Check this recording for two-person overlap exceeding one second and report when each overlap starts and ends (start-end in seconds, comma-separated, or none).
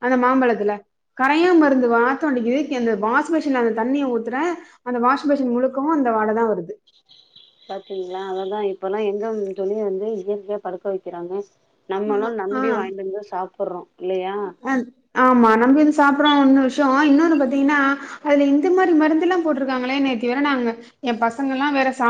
none